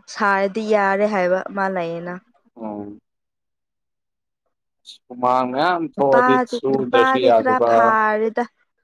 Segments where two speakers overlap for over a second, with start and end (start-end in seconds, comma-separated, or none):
5.9-8.0